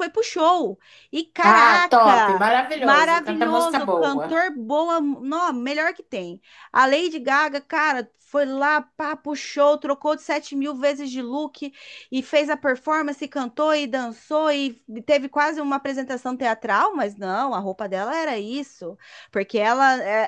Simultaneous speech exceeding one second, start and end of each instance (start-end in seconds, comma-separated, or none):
1.4-4.4